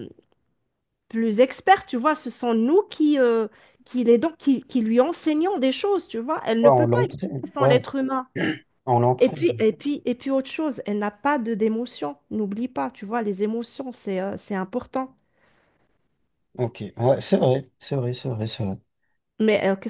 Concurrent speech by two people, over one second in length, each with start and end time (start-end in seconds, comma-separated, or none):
6.6-7.9